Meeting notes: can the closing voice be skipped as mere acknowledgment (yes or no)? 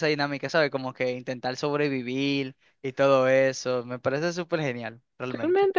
no